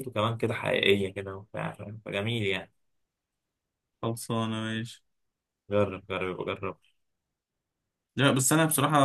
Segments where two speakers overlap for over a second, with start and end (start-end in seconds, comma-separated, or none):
none